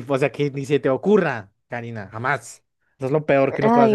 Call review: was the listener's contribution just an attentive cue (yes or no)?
yes